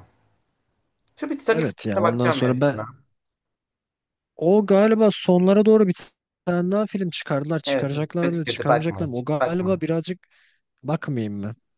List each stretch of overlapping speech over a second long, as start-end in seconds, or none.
1.5-2.8, 7.6-9.8